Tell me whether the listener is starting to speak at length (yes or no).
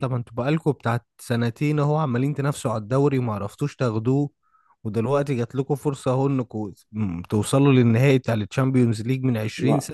yes